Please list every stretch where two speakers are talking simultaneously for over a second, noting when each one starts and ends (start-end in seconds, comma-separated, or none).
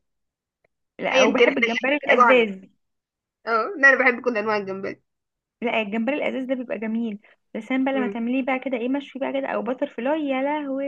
1.1-2.5